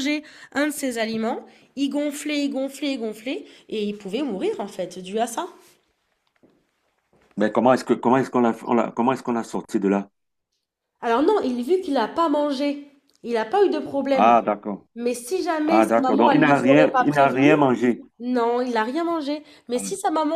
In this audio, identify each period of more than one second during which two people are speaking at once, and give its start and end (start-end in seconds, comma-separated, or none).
15.7-17.5